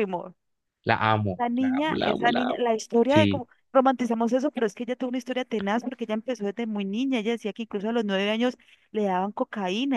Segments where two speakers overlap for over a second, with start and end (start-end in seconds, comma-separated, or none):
1.4-3.5